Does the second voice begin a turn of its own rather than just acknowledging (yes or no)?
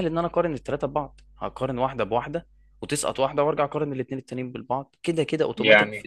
no